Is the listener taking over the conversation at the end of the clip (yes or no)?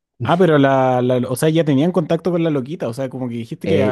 yes